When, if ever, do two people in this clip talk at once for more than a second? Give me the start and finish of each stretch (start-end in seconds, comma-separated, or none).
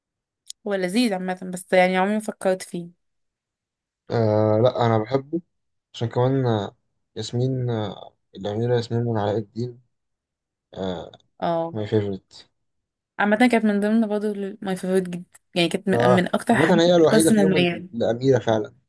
15.9-17.9